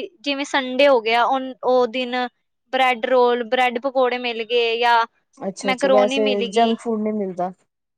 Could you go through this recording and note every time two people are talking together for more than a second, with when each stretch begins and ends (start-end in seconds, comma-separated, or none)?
none